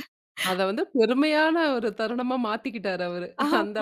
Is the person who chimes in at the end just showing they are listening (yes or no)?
no